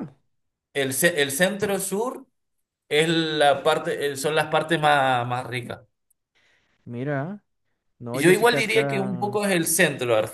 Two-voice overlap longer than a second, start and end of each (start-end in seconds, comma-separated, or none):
8.1-9.4